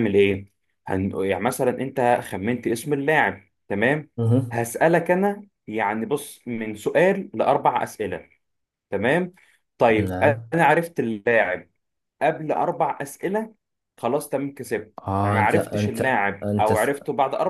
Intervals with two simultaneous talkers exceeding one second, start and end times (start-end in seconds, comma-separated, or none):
15.0-16.7